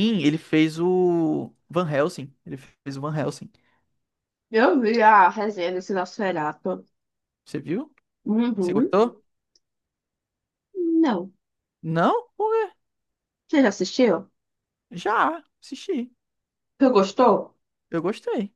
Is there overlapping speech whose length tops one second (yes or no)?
no